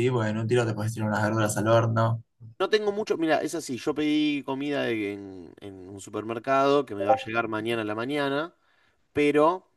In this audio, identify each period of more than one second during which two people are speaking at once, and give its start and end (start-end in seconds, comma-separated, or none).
none